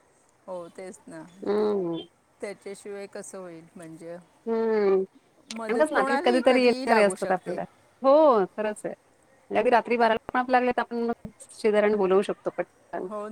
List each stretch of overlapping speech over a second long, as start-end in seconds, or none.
5.5-7.6